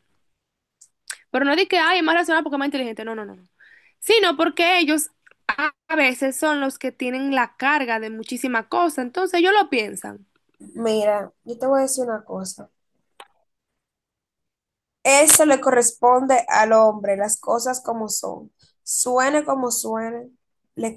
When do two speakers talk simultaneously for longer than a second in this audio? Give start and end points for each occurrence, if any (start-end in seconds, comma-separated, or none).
none